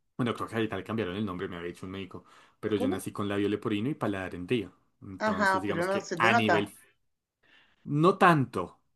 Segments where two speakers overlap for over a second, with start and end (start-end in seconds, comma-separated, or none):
5.2-6.7